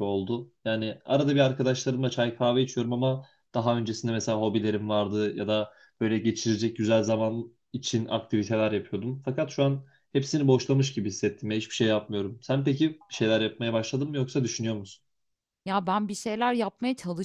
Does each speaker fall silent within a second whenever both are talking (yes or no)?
yes